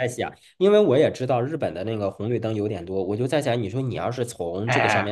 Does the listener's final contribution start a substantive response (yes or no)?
no